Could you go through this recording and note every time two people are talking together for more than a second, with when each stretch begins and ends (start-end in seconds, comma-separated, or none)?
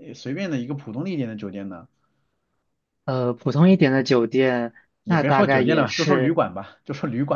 5.0-6.4